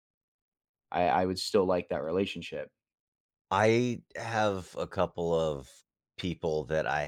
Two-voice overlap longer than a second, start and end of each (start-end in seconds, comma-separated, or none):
none